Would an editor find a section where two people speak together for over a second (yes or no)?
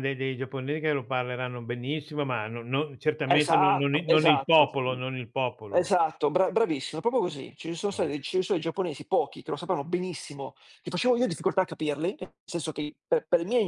yes